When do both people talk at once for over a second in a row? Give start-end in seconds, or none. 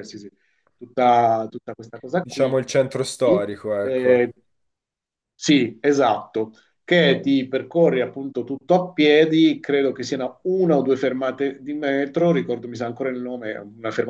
none